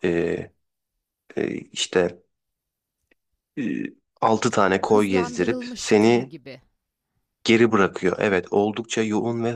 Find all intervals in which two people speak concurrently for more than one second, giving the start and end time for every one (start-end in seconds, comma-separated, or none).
4.8-6.3